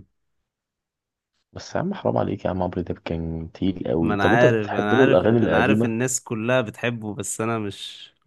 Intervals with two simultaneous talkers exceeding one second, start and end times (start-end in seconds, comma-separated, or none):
4.0-5.9